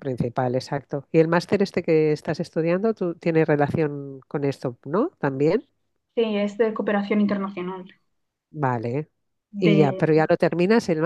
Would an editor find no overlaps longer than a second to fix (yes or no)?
yes